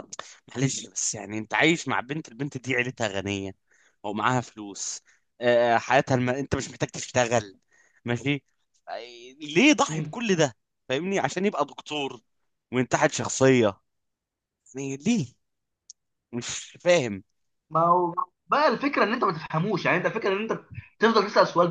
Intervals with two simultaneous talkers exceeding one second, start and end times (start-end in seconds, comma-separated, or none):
none